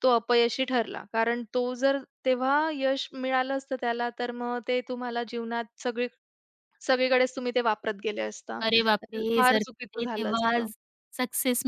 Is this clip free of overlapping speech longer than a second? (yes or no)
no